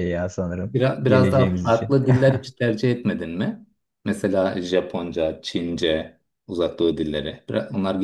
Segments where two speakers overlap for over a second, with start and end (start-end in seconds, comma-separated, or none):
0.6-1.9